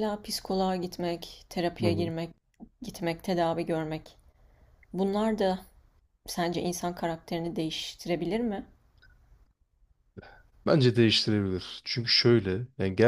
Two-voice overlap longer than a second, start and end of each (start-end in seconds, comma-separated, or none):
none